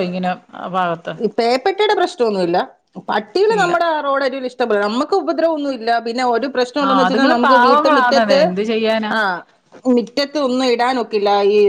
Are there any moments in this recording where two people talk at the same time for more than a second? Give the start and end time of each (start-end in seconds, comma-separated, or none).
6.9-8.4